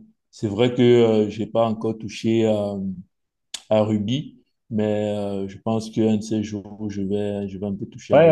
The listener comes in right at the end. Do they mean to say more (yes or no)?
yes